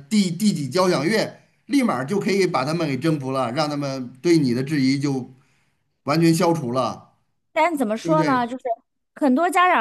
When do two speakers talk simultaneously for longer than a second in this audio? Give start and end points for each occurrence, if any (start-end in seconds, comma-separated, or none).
none